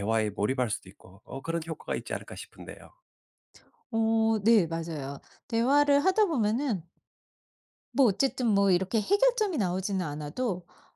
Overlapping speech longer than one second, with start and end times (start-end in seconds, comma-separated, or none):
none